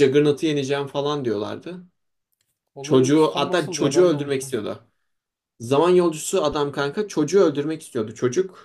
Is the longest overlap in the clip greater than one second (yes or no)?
yes